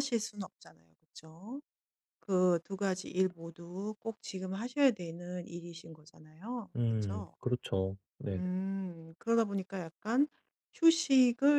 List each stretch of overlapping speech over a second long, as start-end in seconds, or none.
none